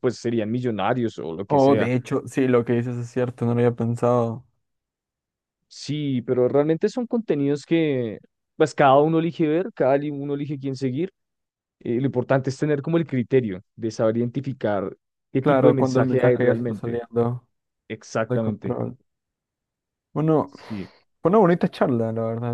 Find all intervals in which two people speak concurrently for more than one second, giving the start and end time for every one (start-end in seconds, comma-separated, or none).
15.4-17.0